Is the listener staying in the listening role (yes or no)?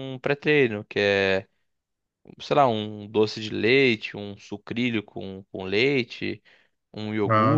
yes